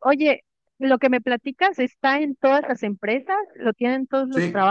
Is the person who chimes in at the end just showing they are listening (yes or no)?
no